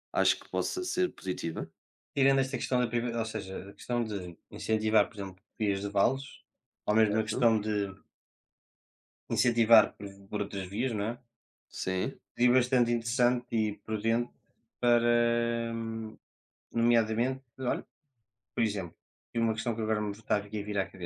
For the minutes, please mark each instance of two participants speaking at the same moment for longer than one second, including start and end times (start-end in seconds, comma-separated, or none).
none